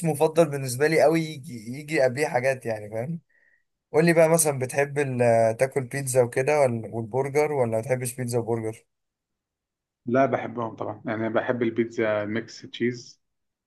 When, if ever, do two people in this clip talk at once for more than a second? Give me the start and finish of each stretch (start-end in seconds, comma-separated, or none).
none